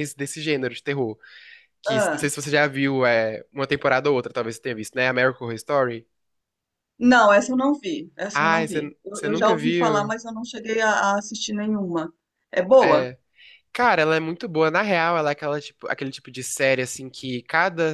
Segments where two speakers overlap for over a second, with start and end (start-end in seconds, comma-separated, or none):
8.3-10.1